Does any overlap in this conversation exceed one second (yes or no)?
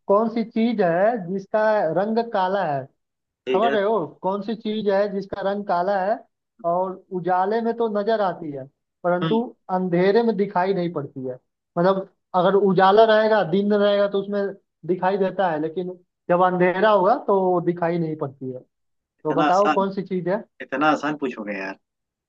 no